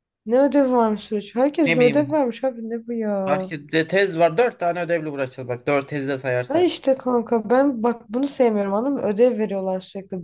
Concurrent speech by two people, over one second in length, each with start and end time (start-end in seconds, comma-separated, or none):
none